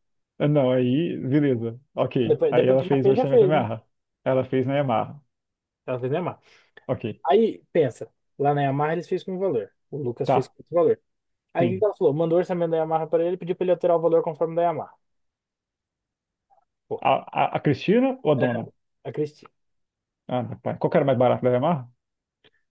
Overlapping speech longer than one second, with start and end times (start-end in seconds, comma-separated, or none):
2.3-3.7